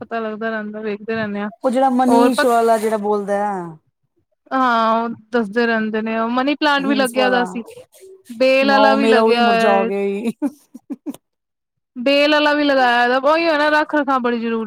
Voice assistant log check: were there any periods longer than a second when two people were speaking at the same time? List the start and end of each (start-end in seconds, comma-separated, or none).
8.7-9.9